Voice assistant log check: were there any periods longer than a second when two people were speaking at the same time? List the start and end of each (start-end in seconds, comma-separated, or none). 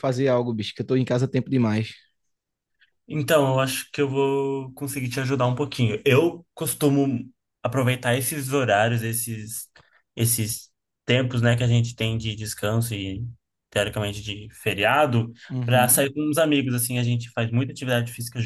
none